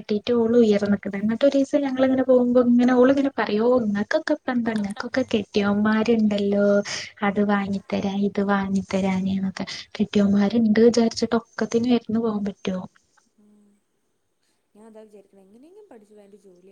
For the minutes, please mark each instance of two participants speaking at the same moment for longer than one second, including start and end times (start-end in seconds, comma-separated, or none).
none